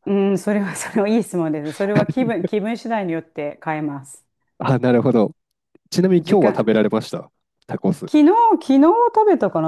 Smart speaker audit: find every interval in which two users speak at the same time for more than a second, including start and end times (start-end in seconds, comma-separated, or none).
none